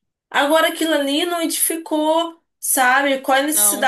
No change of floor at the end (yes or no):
yes